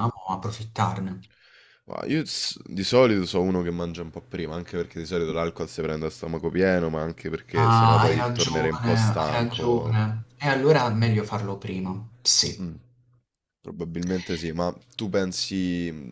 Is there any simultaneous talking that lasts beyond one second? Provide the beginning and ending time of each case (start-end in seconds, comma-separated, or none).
7.6-10.0